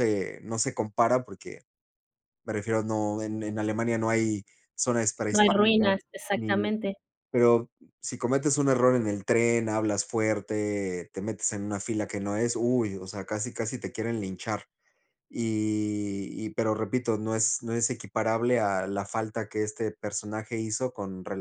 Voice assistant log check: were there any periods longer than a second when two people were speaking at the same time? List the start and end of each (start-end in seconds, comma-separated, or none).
5.3-6.7